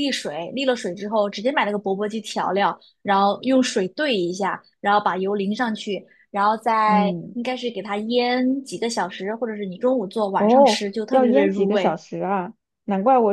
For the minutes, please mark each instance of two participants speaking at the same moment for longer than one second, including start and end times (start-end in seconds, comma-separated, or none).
10.4-12.0